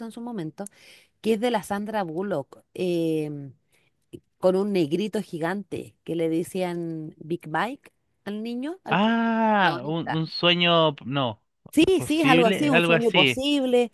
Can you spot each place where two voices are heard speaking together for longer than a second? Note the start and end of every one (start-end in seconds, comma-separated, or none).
8.9-10.2, 11.9-13.4